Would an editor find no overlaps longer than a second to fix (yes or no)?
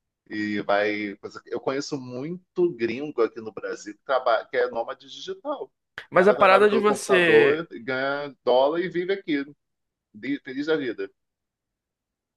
no